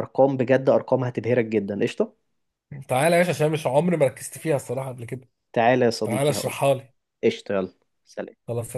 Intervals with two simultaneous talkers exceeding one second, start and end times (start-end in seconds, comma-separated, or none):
none